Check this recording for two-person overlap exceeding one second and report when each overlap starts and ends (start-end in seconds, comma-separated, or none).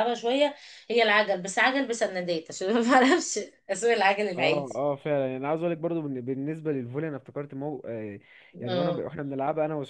none